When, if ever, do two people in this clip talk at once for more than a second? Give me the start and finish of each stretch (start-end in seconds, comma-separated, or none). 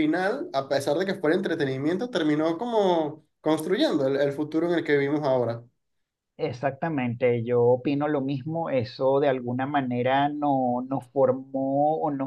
none